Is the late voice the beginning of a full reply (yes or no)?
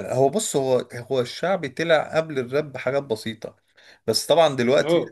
no